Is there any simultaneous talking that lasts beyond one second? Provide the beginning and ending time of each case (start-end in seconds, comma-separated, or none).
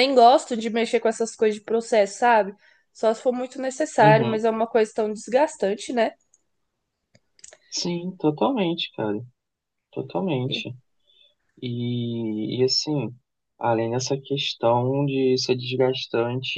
none